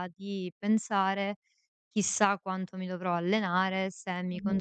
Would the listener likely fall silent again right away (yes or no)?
yes